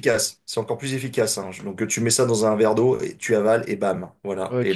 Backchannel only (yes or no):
no